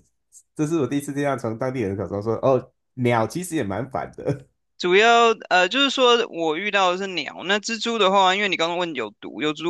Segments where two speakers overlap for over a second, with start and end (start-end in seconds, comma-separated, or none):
none